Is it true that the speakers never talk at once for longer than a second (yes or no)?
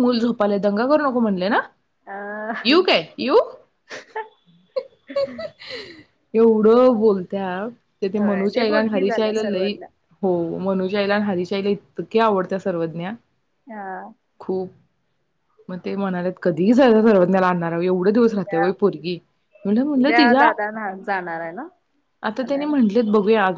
no